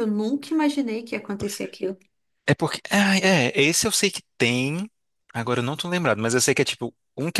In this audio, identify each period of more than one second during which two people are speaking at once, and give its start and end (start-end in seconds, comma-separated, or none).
none